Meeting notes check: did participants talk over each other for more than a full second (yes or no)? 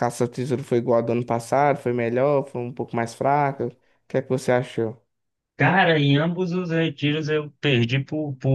no